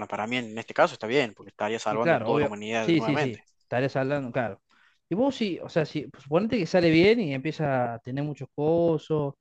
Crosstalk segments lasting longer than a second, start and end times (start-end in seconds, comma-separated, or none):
1.9-3.4